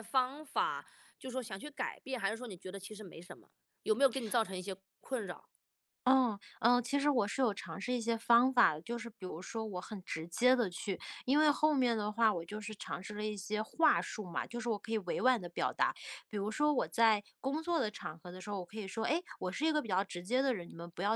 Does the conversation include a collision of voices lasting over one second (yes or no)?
no